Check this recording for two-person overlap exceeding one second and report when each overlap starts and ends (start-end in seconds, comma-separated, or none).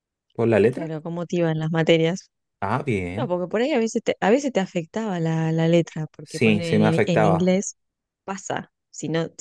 6.2-7.5